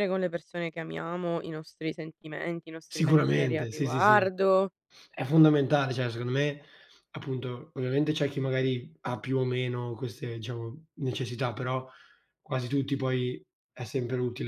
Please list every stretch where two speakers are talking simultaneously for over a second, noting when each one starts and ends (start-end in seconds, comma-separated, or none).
2.9-4.3